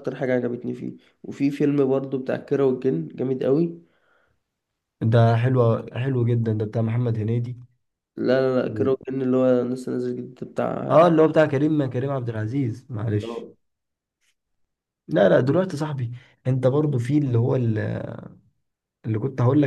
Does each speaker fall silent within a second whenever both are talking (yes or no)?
yes